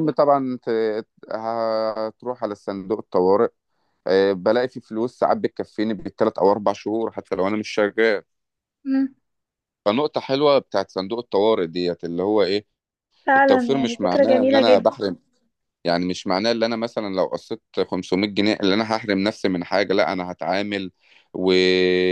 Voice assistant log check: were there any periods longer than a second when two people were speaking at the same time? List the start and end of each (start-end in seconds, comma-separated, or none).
13.4-14.9